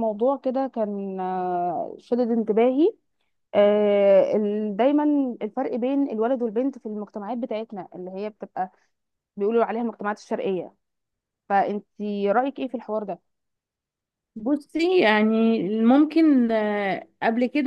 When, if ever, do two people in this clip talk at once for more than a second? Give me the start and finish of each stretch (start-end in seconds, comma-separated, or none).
none